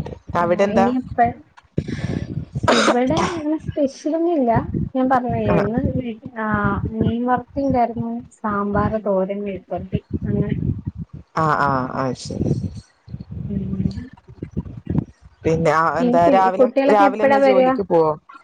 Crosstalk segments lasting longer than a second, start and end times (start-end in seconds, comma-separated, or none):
16.0-17.7